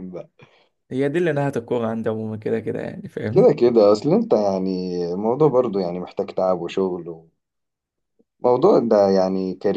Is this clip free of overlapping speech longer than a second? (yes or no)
yes